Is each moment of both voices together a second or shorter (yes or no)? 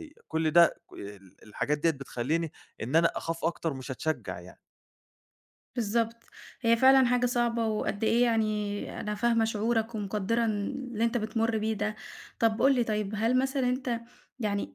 yes